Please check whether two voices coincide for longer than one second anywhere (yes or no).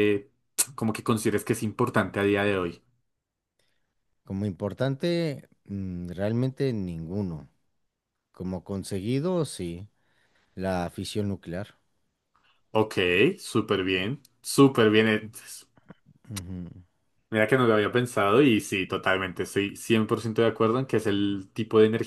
no